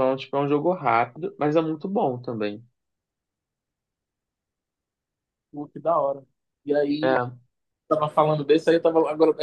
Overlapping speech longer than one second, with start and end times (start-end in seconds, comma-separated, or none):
none